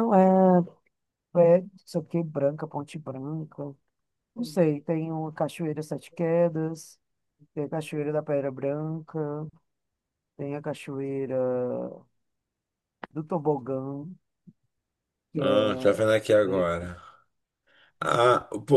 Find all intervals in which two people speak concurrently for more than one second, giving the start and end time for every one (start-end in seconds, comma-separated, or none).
15.4-16.9